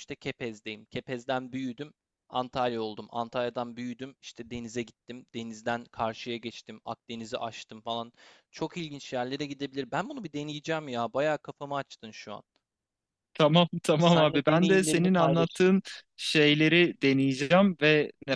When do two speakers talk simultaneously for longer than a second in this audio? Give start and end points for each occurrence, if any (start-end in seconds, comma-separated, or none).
14.0-15.7